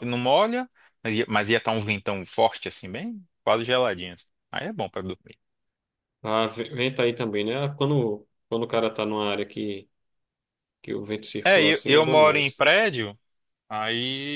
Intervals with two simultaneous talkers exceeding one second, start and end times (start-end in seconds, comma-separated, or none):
11.4-12.7